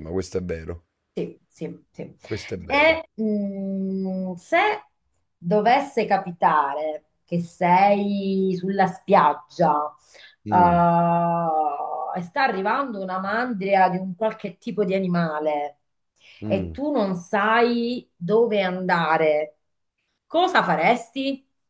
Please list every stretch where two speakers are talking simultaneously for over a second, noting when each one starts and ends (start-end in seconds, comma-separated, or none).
none